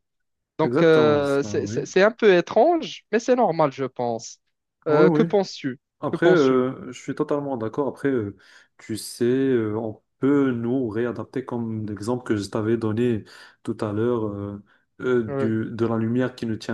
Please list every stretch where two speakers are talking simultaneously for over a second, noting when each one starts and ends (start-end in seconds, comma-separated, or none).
0.6-1.9